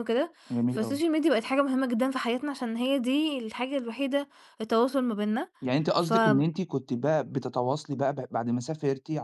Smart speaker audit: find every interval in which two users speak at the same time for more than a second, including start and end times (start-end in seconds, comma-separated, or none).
none